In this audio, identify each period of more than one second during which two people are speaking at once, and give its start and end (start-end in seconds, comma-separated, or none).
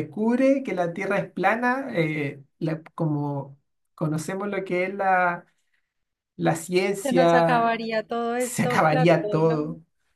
8.4-9.6